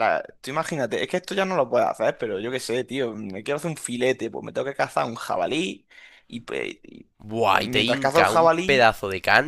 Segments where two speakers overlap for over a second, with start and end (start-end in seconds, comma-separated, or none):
7.6-8.9